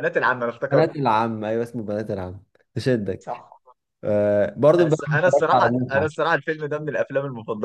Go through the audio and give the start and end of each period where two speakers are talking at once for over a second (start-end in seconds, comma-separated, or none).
4.8-6.2